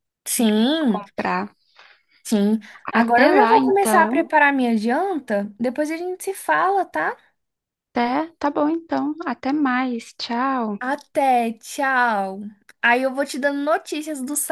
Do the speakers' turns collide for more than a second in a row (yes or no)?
yes